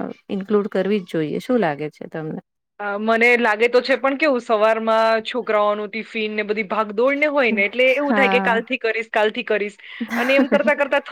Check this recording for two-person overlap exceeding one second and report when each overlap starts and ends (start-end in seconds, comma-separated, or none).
none